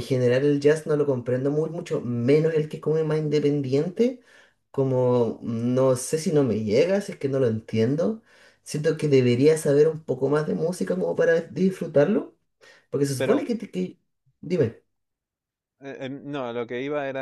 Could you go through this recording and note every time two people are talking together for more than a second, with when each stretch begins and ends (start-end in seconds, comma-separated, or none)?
none